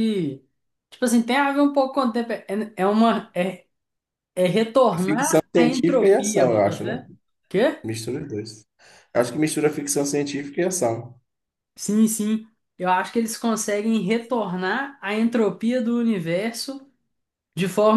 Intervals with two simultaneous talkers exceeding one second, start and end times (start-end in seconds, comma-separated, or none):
5.0-7.0